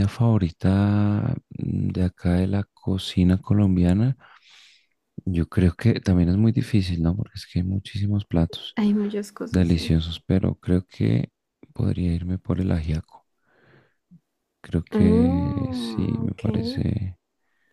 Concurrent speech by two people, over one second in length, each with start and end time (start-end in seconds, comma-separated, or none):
14.9-16.4